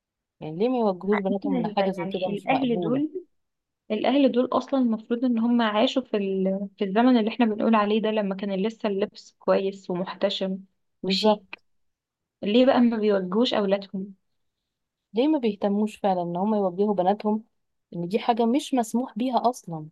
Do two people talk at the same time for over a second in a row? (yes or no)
yes